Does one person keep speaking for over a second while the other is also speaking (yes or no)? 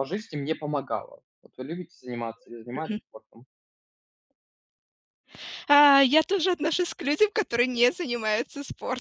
no